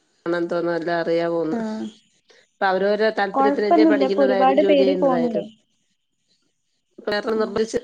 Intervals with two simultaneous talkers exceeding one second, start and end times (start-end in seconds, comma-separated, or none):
3.4-5.4